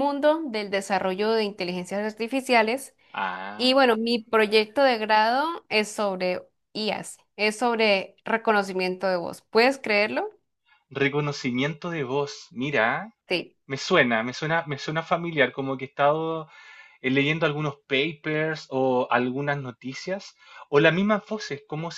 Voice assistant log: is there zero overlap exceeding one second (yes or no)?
yes